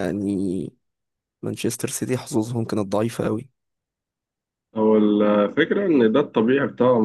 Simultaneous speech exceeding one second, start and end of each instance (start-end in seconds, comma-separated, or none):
none